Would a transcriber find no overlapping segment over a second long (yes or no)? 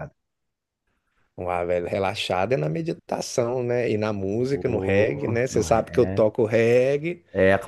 no